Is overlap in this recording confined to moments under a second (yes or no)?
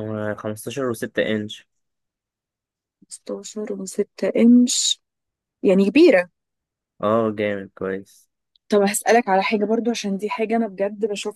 yes